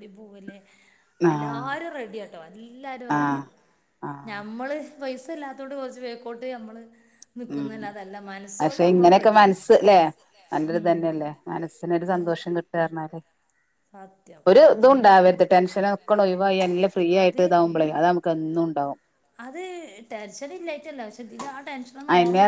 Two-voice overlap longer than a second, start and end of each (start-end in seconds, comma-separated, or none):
none